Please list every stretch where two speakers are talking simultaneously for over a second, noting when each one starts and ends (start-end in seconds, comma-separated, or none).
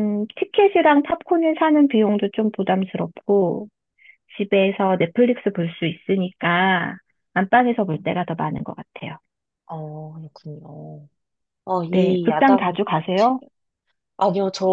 11.9-13.4